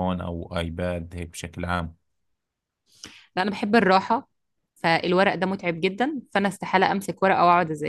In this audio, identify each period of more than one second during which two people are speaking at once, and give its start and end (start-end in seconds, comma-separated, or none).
none